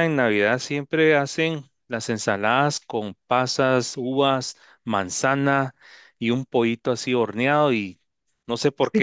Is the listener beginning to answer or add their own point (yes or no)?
yes